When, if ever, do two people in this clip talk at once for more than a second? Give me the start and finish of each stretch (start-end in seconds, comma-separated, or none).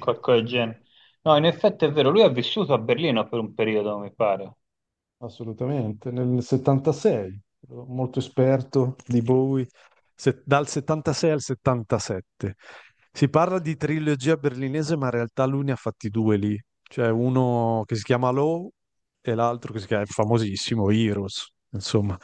none